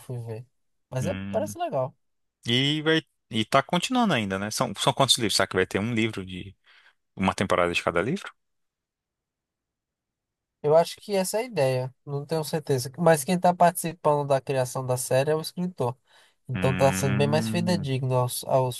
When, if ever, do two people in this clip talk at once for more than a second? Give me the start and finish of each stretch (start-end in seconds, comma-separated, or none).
16.5-17.9